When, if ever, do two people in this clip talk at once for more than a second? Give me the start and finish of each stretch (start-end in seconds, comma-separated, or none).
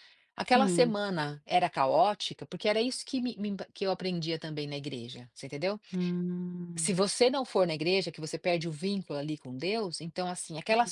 none